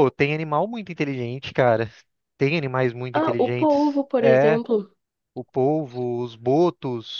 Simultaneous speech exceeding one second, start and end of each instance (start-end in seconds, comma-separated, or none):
3.1-4.6